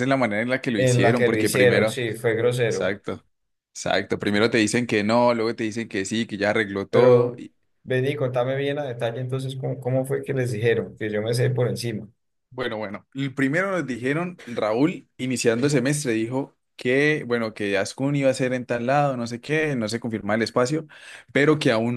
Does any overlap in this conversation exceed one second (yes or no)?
yes